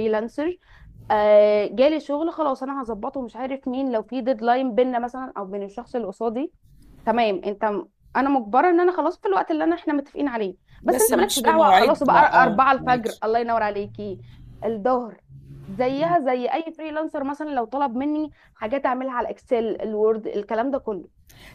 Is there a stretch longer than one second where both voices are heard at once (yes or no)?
yes